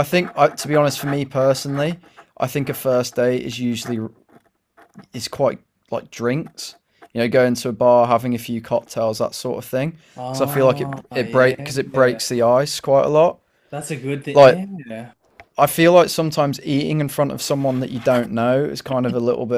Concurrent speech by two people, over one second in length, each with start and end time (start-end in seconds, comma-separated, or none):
10.2-12.2